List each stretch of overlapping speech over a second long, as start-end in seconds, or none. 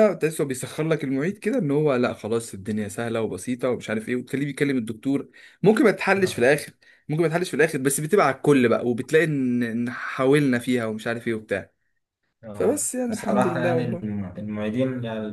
12.5-14.2